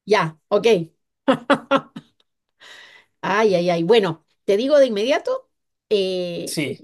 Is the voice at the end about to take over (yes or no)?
no